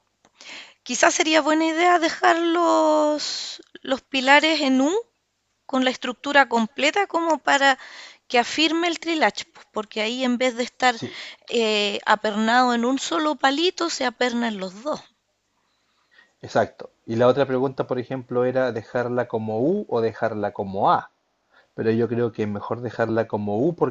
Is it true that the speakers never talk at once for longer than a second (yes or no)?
yes